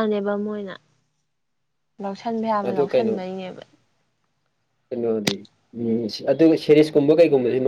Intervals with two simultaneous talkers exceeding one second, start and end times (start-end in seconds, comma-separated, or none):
none